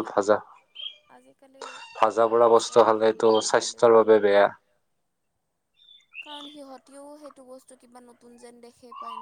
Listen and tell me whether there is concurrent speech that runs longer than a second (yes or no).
yes